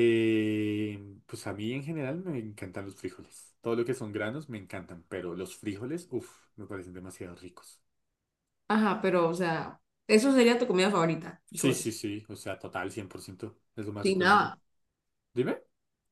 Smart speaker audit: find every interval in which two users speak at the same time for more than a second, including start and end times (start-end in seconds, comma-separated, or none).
none